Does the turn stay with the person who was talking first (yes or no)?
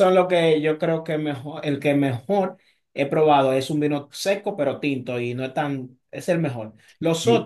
yes